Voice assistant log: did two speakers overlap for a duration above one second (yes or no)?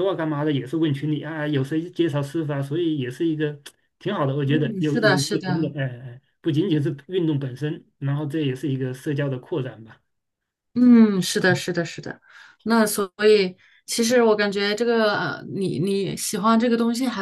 yes